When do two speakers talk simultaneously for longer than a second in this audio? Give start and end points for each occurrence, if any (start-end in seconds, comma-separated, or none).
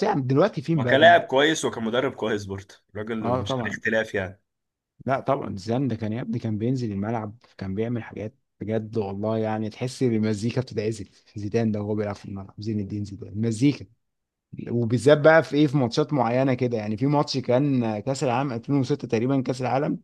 none